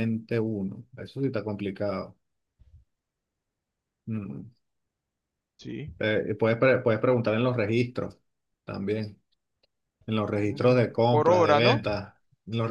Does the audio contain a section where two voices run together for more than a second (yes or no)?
yes